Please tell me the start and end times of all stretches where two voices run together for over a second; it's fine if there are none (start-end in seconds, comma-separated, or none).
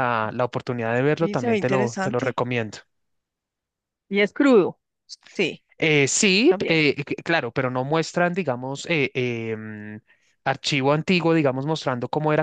1.1-2.4